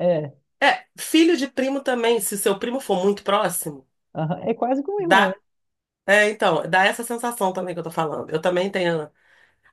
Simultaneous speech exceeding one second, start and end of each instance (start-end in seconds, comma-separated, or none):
none